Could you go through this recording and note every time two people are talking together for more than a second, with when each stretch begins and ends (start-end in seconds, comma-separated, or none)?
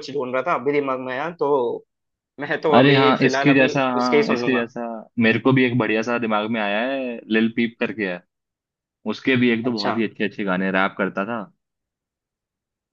2.7-4.7